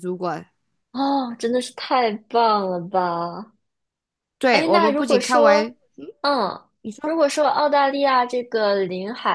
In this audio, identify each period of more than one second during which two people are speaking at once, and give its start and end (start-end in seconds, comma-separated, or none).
4.5-5.8